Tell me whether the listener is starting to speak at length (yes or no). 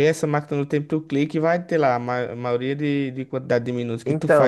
yes